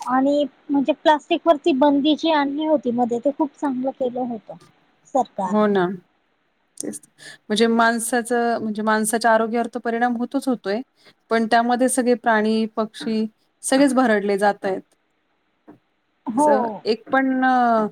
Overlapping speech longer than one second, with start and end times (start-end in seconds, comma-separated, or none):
none